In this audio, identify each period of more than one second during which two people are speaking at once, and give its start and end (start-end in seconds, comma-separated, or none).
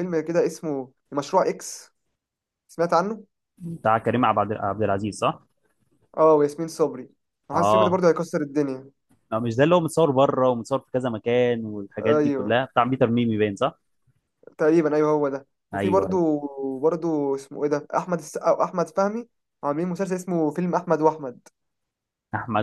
none